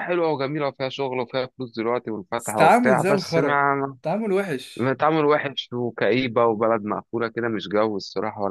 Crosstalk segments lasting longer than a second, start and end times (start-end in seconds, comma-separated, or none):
2.4-3.6